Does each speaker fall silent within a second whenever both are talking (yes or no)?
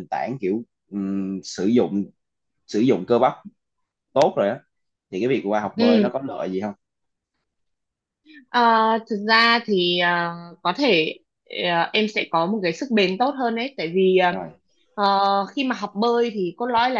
yes